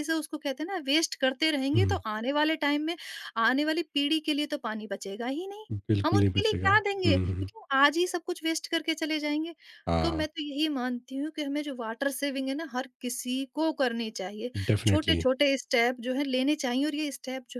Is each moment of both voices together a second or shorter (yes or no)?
no